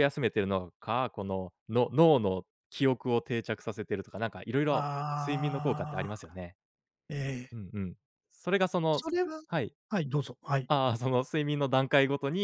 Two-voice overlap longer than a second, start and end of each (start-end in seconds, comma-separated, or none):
4.7-6.4